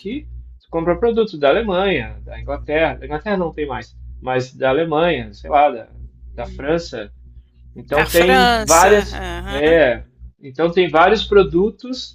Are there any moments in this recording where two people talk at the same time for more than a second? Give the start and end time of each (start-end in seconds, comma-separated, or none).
7.9-9.9